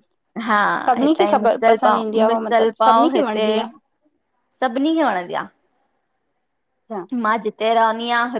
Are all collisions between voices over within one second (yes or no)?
no